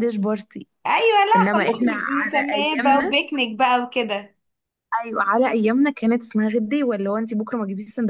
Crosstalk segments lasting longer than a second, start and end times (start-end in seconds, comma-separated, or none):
1.4-3.1